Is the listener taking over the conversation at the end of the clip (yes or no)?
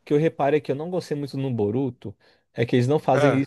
no